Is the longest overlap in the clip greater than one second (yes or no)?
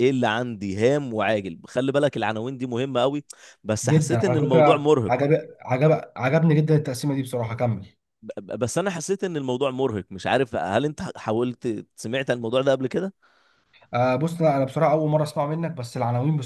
yes